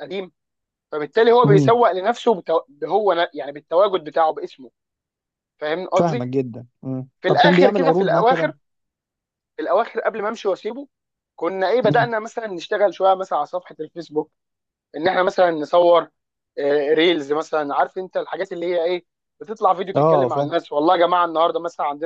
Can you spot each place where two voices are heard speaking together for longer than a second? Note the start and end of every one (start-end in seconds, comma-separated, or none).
7.2-8.5